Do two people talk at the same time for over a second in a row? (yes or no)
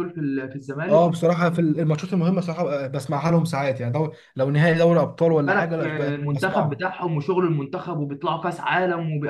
yes